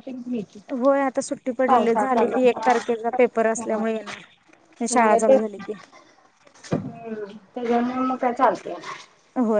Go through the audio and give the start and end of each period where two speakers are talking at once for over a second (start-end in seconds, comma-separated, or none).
1.7-3.8